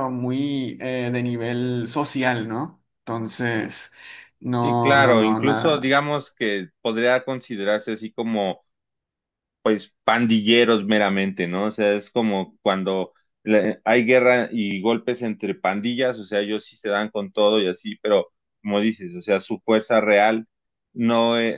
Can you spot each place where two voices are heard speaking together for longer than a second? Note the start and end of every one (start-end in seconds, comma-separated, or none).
4.6-6.0